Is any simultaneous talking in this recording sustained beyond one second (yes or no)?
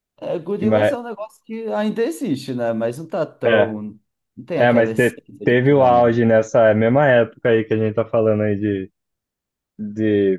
yes